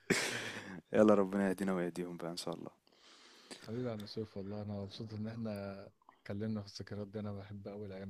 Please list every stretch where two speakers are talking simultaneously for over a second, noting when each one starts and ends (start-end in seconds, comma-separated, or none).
none